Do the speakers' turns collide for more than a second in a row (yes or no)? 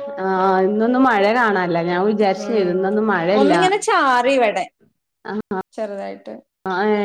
no